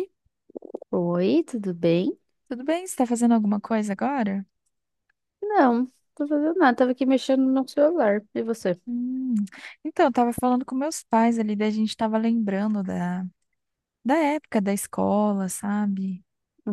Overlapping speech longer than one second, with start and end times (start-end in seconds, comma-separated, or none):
none